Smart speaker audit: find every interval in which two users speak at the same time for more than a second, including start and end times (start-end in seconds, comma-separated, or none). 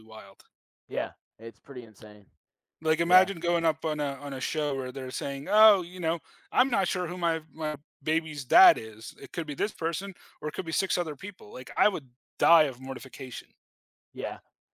none